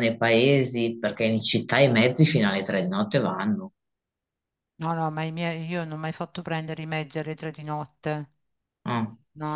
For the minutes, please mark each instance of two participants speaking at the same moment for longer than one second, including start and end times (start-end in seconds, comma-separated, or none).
none